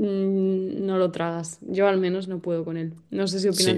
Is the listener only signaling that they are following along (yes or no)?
no